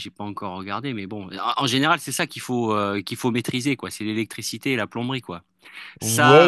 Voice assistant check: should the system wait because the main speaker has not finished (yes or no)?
no